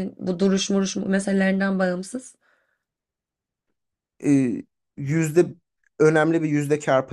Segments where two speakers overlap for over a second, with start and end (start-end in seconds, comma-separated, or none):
none